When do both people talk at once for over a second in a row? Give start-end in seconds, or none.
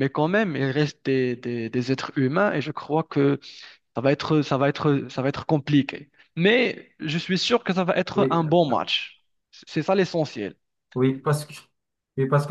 none